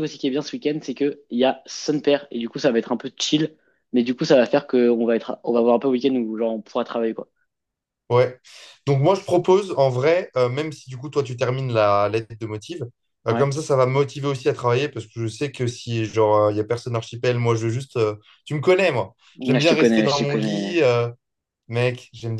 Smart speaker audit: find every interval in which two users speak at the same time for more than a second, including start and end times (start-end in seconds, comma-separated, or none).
19.4-20.8